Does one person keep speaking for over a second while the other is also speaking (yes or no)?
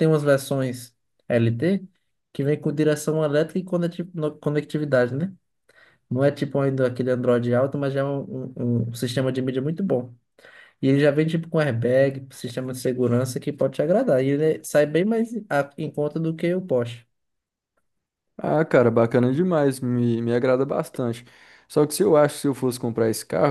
no